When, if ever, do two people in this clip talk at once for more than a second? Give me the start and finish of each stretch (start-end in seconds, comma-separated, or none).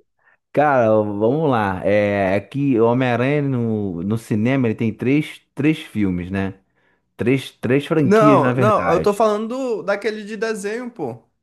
8.0-9.3